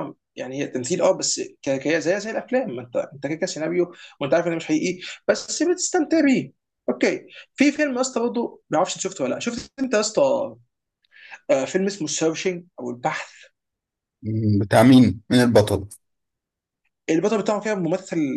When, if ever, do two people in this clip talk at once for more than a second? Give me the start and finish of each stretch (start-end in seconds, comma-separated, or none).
none